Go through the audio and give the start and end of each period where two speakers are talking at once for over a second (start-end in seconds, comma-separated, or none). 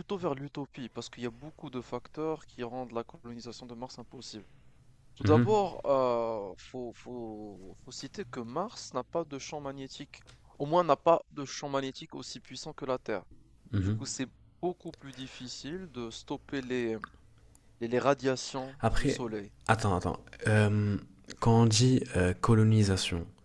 none